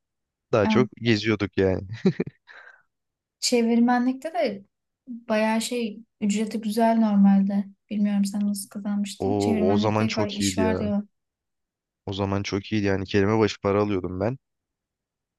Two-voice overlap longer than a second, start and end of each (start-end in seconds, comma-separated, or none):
9.2-10.8